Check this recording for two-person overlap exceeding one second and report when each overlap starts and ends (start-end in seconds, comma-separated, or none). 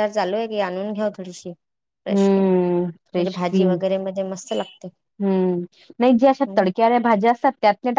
2.1-3.8